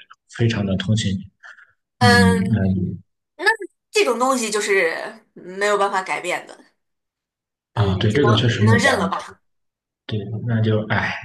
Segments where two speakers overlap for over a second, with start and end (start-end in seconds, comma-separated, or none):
7.7-9.4